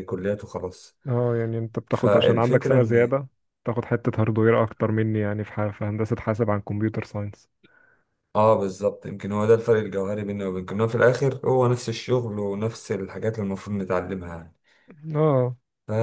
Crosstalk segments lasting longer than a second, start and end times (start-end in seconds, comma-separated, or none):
1.9-3.2